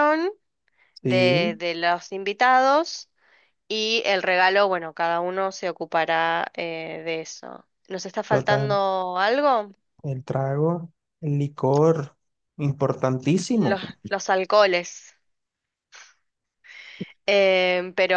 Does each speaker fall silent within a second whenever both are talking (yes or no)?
yes